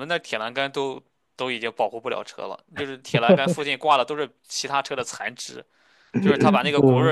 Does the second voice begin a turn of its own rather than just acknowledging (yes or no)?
no